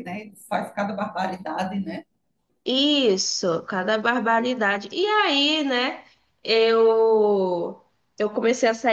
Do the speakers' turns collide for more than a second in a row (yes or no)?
no